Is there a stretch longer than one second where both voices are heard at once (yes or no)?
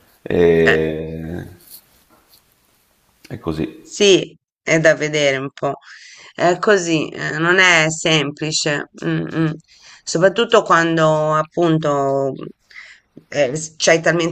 no